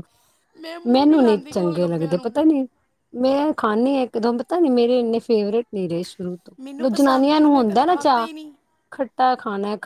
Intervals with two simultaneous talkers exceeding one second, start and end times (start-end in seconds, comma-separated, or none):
0.9-2.3, 6.6-8.3